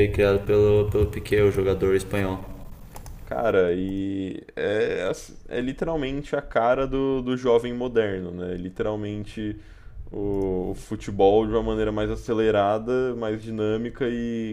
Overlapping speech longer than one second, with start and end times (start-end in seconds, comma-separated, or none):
none